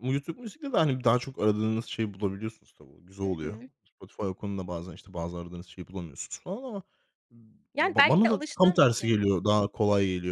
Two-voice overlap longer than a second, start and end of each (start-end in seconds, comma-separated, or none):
7.8-9.2